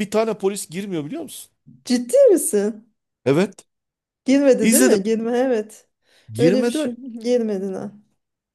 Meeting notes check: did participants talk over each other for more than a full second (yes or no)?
no